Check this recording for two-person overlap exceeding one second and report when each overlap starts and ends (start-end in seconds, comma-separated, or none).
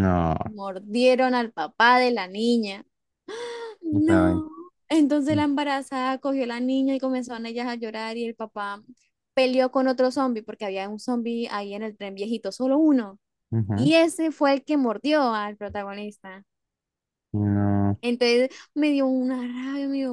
none